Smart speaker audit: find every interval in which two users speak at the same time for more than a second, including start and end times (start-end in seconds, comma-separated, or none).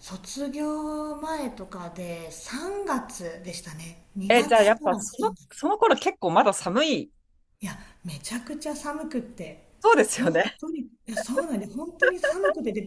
4.3-5.6